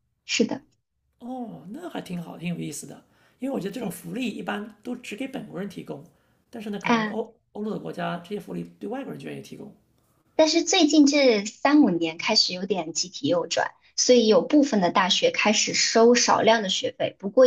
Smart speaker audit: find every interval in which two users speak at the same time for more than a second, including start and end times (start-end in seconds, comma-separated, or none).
none